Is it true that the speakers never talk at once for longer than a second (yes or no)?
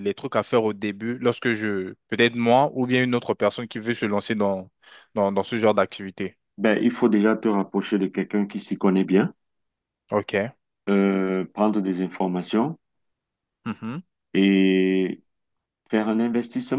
yes